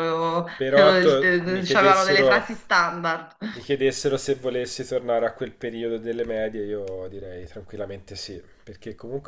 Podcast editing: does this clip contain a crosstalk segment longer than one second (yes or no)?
yes